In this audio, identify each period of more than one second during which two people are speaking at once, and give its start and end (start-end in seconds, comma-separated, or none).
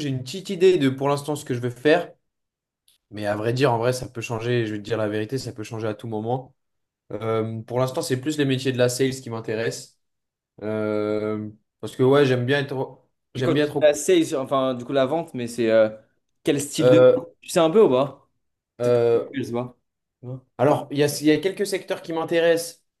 none